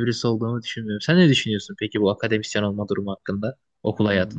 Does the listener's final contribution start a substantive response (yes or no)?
yes